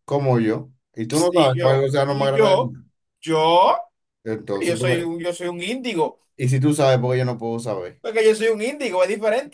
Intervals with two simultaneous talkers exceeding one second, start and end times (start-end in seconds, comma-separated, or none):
1.3-2.7